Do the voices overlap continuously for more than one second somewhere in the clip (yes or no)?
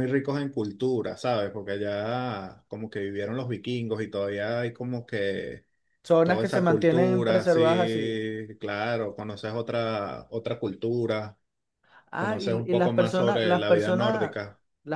yes